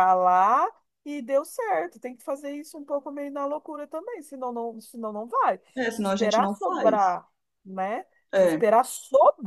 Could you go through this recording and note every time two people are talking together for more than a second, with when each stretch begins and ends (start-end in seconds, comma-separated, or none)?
5.8-7.2